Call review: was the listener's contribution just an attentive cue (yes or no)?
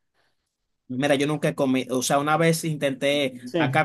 yes